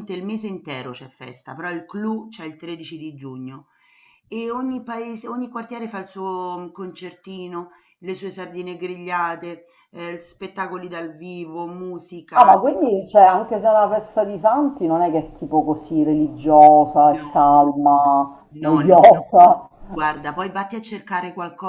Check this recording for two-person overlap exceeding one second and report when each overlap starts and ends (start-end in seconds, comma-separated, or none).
none